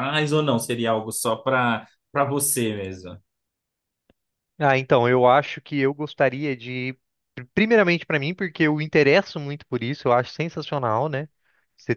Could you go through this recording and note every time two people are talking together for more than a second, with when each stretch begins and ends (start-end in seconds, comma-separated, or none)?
none